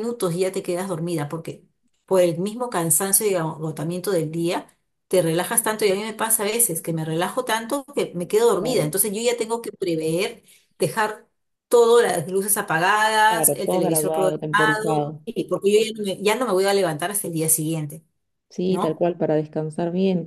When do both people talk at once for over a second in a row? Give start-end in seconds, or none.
13.3-15.2